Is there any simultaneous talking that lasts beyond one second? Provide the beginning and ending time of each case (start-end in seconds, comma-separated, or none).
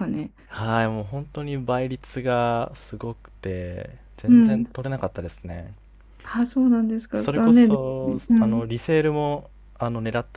7.2-8.7